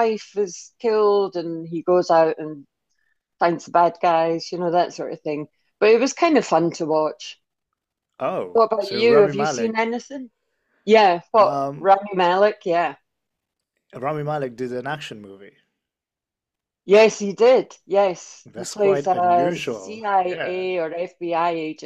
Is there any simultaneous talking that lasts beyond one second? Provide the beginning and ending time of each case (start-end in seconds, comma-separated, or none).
8.5-9.8, 18.4-20.6